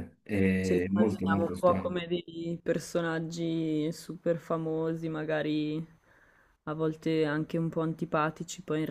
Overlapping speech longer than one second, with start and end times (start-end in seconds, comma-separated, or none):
0.6-1.9